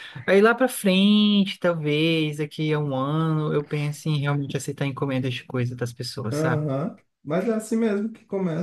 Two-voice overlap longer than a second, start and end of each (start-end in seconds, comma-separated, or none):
none